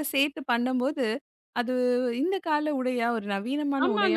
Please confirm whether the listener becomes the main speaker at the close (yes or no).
yes